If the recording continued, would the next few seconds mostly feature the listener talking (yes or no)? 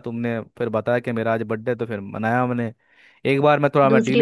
no